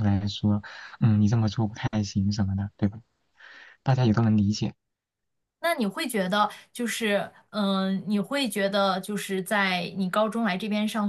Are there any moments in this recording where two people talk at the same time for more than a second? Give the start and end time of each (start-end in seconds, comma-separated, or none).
none